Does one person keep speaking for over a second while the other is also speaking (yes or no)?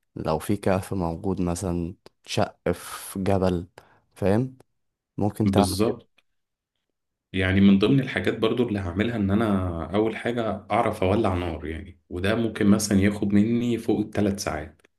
no